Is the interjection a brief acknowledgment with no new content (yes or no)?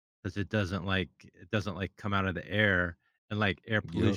yes